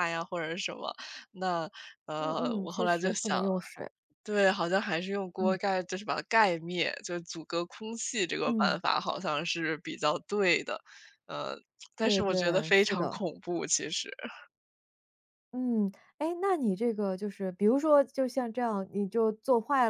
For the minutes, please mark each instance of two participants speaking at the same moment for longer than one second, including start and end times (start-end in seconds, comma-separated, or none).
2.2-3.4, 12.0-13.2